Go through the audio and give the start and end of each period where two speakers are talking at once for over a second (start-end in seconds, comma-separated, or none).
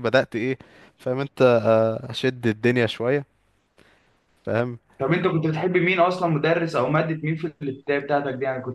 none